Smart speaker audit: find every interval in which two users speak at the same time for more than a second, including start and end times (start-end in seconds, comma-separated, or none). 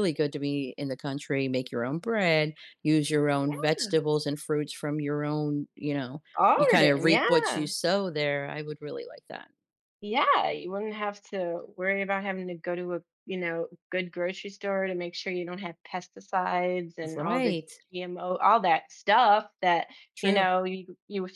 6.3-7.7